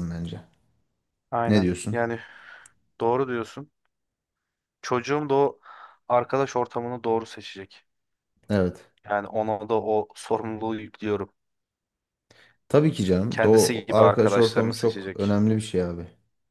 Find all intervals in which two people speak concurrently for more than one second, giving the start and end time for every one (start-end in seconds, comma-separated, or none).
13.3-15.4